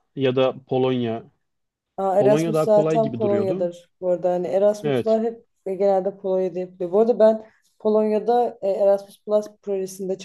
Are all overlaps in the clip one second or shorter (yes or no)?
no